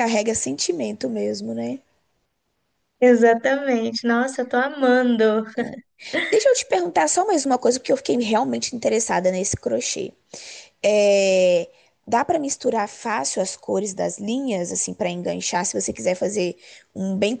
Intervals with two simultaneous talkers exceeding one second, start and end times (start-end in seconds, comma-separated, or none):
none